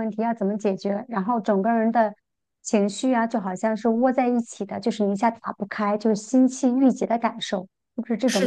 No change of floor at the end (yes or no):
no